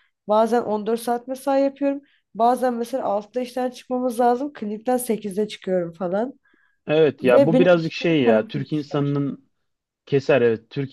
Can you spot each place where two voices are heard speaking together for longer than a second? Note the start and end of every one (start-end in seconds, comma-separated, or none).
7.2-9.2